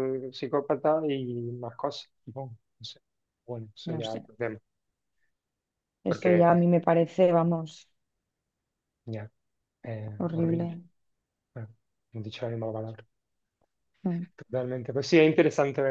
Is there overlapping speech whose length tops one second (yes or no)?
no